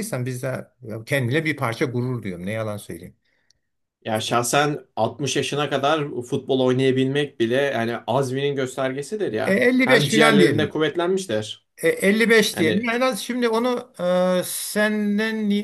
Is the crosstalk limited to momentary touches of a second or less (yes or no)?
no